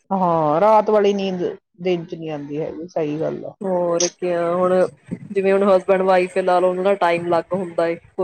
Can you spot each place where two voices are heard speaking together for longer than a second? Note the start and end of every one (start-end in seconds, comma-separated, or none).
none